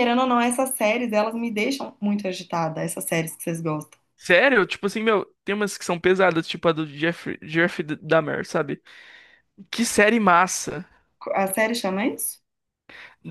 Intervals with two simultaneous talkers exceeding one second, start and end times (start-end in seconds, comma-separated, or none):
none